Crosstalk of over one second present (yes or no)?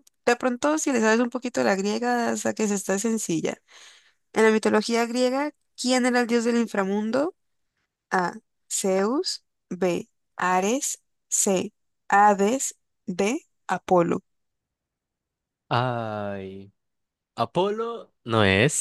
no